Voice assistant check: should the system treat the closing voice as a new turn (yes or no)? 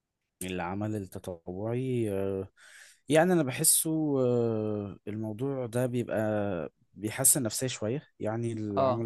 no